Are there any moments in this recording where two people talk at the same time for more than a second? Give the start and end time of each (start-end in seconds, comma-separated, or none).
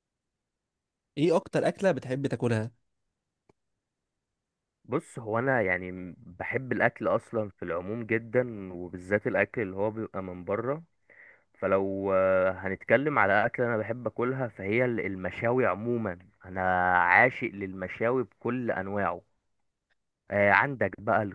none